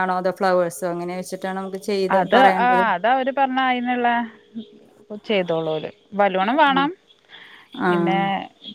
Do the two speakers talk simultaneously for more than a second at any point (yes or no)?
no